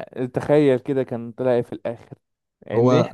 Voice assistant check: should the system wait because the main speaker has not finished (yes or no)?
yes